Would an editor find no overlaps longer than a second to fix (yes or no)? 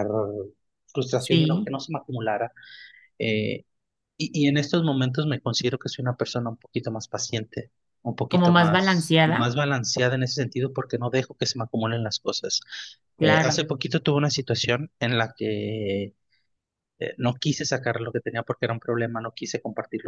no